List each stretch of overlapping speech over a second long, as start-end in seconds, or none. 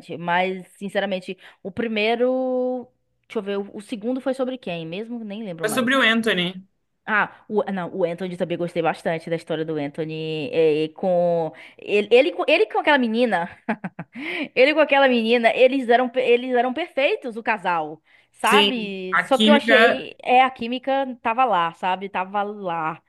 18.4-20.1